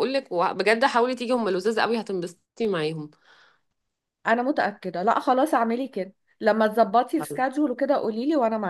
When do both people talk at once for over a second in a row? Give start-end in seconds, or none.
none